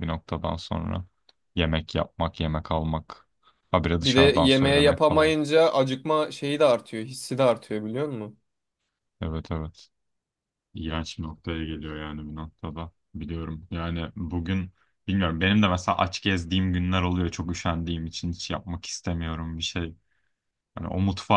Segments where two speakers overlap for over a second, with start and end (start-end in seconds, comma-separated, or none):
4.0-5.3